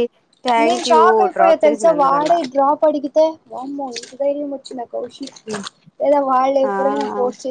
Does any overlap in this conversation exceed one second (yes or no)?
yes